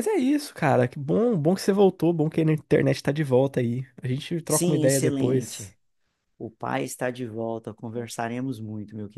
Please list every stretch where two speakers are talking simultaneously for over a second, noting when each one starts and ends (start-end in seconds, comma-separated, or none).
4.5-5.8